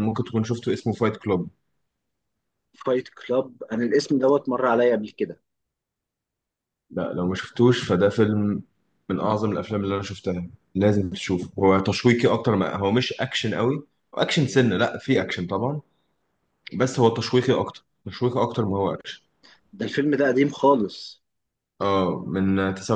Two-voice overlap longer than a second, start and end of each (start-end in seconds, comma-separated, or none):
none